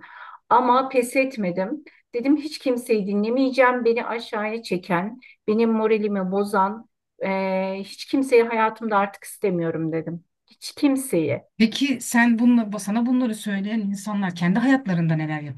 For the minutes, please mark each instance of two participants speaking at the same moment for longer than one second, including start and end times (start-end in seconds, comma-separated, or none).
none